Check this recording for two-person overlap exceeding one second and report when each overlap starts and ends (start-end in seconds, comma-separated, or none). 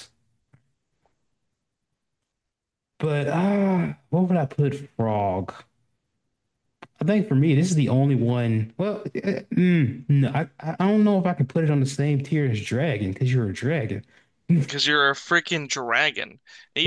none